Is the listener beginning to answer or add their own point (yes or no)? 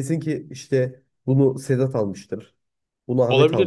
no